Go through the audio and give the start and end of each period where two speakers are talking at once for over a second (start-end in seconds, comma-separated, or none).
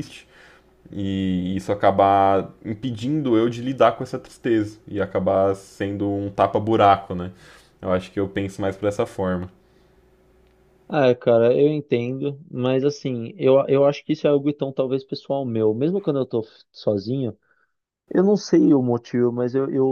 none